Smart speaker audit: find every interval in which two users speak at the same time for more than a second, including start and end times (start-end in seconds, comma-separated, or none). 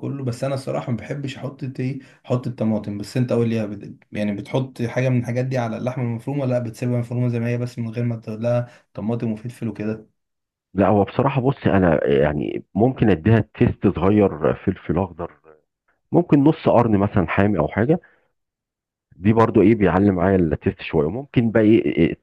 none